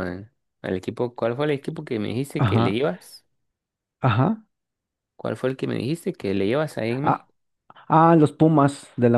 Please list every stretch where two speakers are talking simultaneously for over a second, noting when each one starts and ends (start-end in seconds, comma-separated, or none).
none